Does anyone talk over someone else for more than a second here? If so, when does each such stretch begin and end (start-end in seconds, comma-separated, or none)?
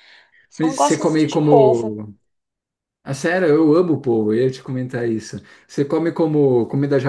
0.6-2.1